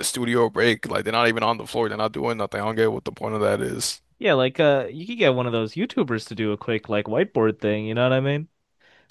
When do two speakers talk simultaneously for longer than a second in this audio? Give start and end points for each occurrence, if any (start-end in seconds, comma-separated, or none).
none